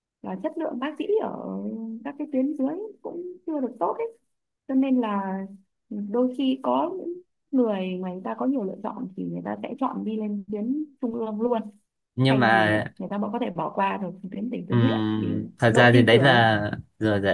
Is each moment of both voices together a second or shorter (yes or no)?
no